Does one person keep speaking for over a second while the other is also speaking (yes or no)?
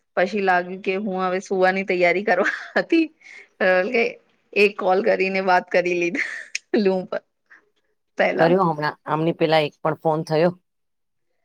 no